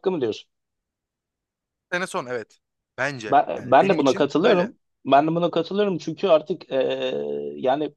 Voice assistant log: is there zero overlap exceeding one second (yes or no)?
no